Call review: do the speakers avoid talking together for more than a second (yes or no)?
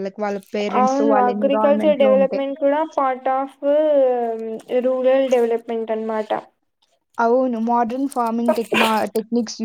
no